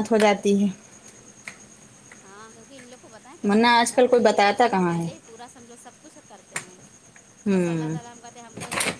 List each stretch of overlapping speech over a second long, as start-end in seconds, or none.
3.5-5.1